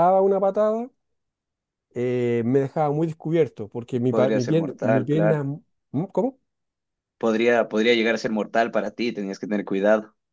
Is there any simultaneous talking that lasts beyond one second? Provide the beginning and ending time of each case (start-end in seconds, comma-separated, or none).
4.1-5.4